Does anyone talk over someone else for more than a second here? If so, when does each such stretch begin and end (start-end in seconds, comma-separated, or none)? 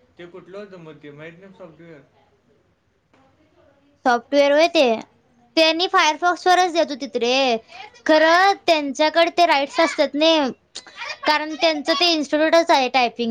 none